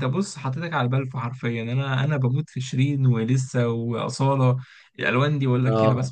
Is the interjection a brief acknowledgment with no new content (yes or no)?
no